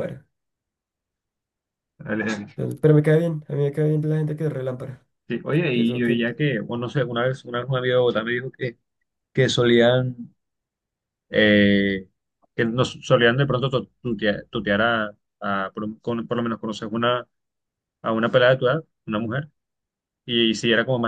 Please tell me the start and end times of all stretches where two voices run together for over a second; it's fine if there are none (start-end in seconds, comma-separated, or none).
none